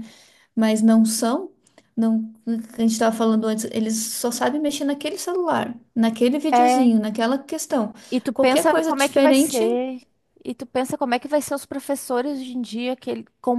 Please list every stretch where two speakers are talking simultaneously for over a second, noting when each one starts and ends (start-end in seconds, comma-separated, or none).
8.3-9.6